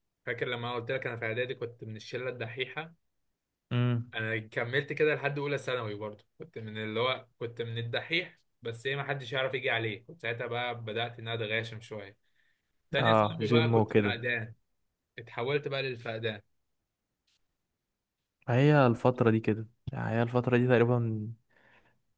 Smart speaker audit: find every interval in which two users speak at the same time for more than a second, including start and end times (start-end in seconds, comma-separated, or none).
13.0-14.2